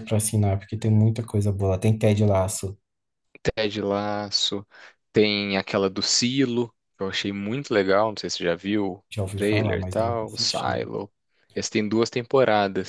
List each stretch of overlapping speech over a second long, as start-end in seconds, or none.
9.1-10.8